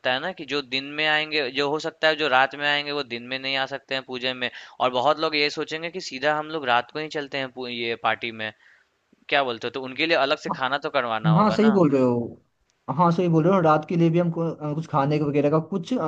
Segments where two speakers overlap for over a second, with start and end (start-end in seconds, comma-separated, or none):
none